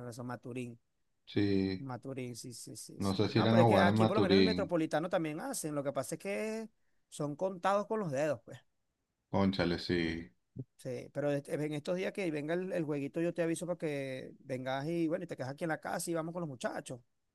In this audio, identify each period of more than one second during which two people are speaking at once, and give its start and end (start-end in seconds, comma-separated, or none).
3.0-4.7